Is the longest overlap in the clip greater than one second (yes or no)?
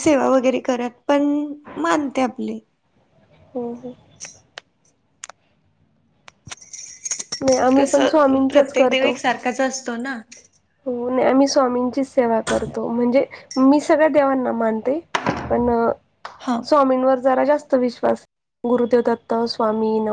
yes